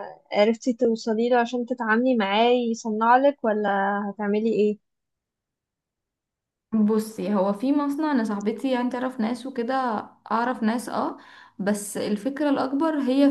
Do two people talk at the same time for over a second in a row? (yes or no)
no